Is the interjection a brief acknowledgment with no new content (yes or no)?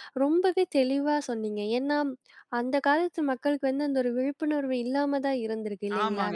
yes